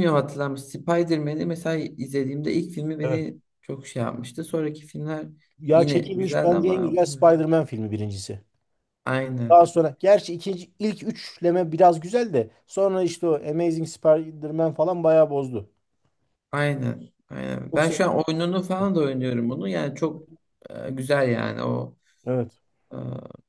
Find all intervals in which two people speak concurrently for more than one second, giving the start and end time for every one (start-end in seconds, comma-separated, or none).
5.7-7.0